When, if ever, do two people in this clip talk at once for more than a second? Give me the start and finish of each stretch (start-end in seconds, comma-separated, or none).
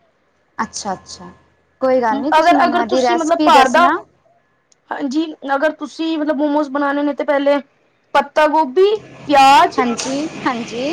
2.4-3.9